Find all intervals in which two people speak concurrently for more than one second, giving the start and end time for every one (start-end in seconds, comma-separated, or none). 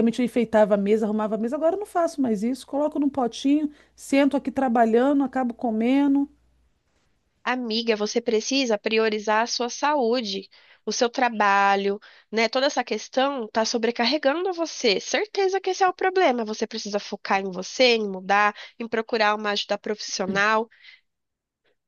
none